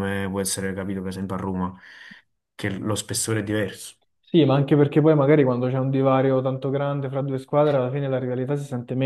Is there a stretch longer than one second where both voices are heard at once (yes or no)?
no